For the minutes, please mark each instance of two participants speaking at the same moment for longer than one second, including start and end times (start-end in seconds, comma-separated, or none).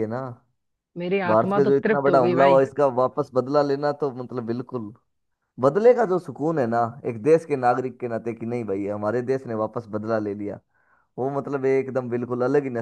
1.3-2.6